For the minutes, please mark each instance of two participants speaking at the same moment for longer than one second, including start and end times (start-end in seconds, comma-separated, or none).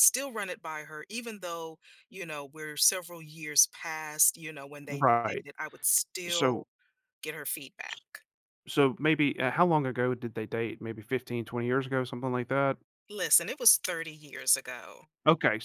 none